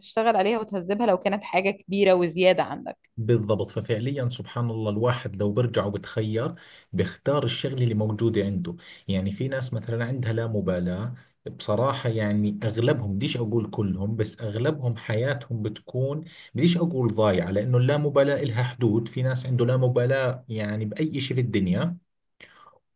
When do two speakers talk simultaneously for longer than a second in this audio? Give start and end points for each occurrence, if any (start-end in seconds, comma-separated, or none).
none